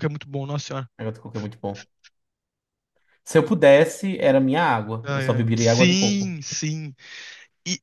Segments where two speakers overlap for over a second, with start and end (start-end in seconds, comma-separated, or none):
5.0-6.4